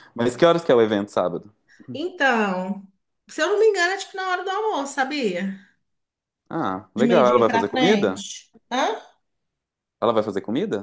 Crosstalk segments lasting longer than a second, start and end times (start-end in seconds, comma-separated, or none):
6.9-8.2